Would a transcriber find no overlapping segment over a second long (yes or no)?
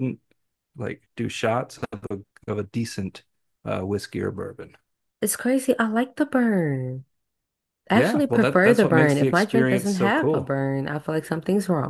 no